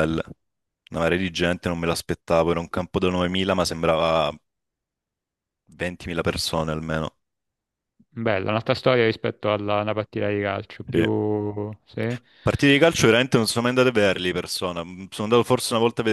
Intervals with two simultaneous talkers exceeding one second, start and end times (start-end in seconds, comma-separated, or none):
none